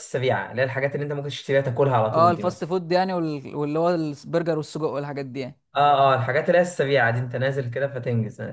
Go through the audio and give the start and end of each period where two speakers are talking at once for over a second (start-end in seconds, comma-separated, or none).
none